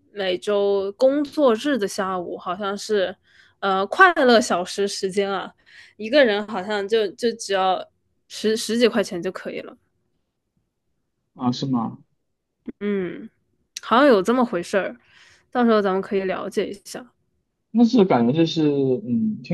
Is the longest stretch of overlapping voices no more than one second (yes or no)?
yes